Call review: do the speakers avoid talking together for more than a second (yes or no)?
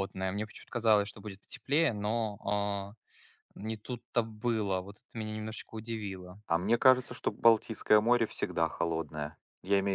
yes